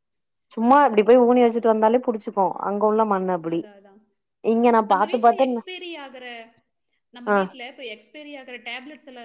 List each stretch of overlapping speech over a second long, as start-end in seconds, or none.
none